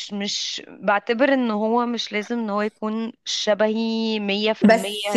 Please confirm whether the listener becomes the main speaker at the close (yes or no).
yes